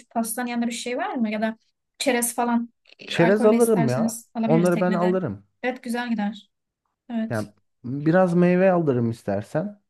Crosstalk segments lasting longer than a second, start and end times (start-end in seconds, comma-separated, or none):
3.1-5.2